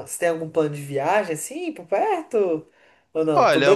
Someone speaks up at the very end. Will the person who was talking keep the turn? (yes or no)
no